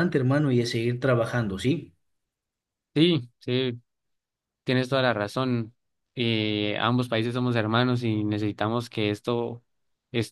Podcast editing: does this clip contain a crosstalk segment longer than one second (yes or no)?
no